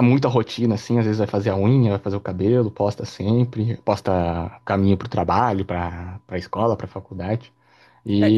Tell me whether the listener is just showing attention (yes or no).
no